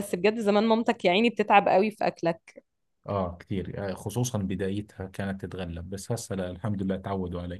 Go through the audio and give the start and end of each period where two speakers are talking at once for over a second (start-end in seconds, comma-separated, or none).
none